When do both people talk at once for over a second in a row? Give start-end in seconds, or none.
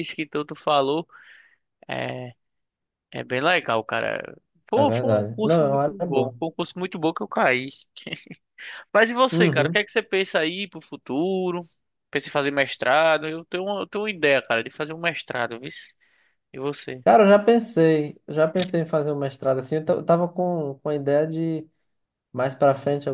4.7-6.4